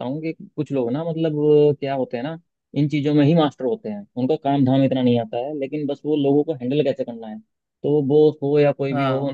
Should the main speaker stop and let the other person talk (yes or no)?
no